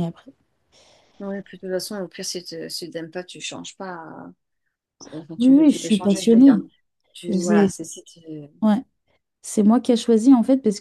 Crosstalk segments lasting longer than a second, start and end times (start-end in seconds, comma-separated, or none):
5.4-6.6